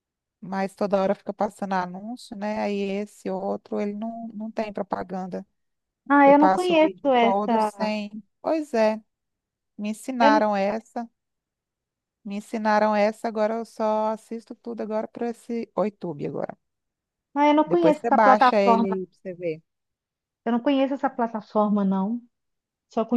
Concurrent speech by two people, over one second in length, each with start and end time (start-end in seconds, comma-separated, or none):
6.2-7.9, 17.6-19.0